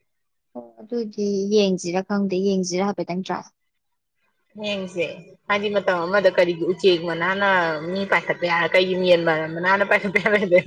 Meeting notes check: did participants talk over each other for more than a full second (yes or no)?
no